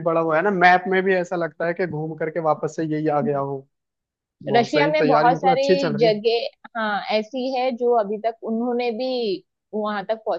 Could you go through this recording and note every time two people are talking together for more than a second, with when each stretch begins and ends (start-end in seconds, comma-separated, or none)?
4.6-6.2